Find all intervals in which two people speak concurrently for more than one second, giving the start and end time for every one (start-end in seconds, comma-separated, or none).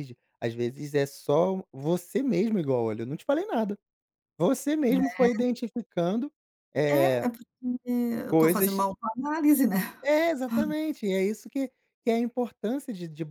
none